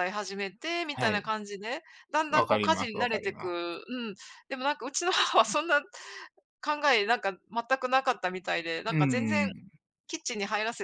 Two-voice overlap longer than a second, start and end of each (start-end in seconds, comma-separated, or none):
2.3-3.6